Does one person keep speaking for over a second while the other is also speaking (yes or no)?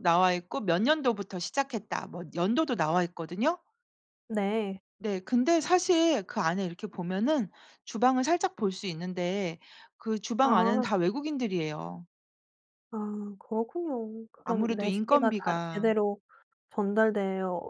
yes